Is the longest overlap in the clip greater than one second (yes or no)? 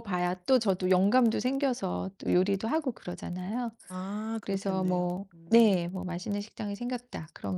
yes